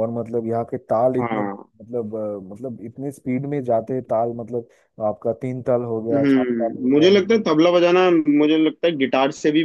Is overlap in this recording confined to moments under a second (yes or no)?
no